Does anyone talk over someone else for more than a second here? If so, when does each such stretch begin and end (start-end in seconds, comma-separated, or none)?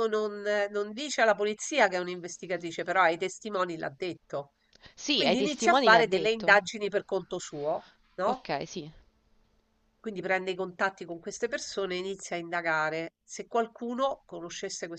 5.1-6.6